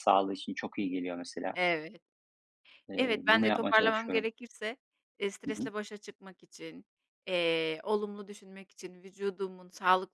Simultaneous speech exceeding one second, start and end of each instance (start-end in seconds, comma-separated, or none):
3.0-4.3